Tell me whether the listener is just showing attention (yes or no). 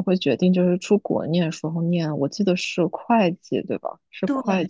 yes